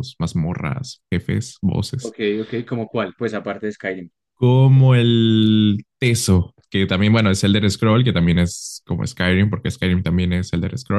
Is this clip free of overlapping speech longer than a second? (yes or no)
yes